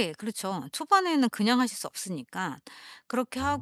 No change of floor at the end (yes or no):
yes